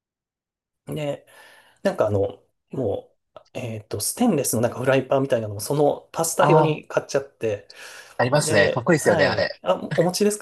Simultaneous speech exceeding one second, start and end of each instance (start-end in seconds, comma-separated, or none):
8.3-9.6